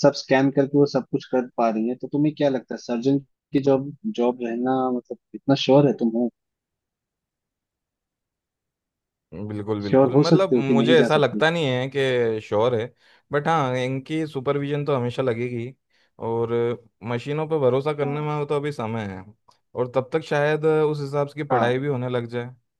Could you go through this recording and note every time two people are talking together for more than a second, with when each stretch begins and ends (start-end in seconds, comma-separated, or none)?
9.9-11.4